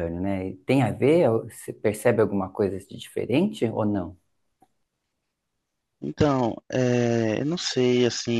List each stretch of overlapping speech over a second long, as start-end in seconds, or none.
none